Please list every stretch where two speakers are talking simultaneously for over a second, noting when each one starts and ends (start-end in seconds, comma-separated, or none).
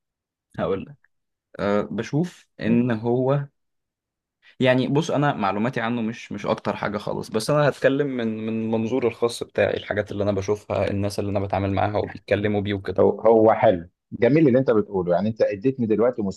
none